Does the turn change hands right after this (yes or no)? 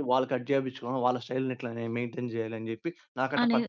yes